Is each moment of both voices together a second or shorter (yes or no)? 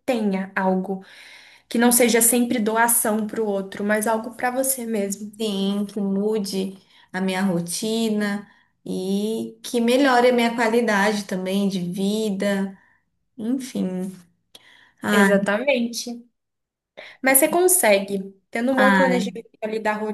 yes